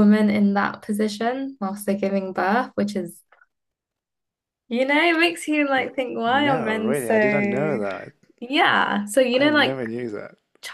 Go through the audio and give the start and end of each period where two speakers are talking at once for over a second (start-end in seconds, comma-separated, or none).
6.3-7.8